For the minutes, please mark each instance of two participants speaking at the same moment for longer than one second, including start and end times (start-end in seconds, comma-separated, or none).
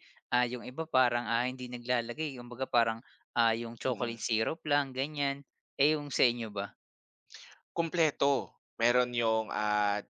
none